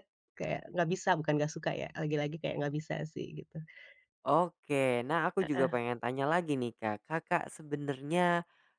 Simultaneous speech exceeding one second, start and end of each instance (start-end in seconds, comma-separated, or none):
none